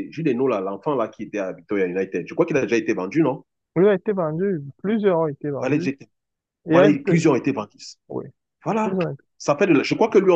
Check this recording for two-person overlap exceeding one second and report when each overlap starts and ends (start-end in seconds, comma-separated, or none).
none